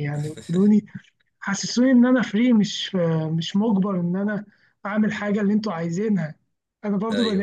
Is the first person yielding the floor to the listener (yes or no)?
no